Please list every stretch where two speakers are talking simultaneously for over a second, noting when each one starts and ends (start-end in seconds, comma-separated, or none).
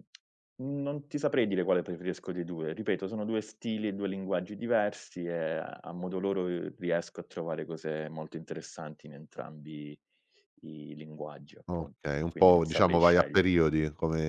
11.7-13.6